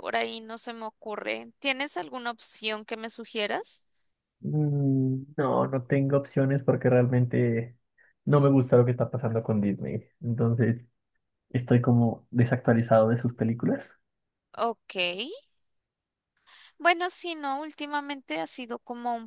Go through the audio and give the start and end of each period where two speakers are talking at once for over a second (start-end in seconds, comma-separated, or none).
none